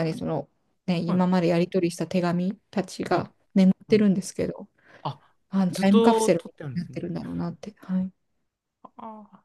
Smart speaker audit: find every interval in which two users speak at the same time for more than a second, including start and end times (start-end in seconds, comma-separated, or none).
5.5-7.0